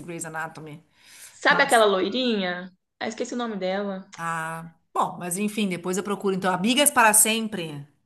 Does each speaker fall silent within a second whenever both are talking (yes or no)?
yes